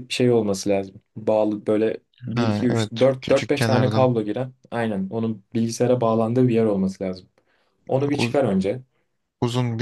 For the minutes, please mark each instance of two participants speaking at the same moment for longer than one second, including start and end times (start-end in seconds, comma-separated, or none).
2.4-4.1